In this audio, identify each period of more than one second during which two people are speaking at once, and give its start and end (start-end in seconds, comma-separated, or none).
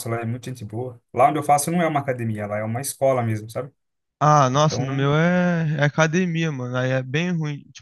none